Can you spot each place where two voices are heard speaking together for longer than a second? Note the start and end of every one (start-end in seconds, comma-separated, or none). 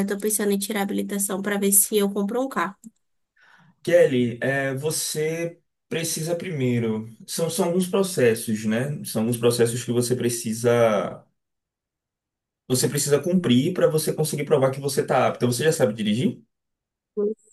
none